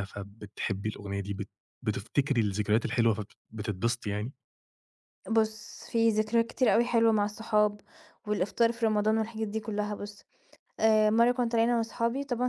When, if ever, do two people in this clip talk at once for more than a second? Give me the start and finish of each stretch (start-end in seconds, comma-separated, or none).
none